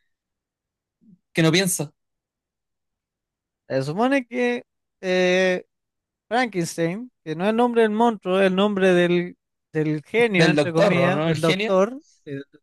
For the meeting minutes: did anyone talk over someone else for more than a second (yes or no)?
yes